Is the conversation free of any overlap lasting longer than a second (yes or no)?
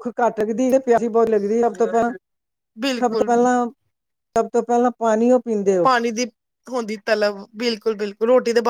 yes